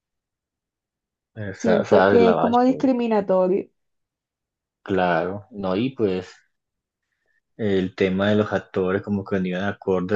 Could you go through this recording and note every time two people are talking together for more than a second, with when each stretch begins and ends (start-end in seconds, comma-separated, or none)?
1.6-2.8